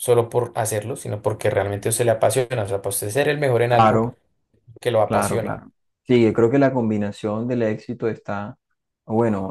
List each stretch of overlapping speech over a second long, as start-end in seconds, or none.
none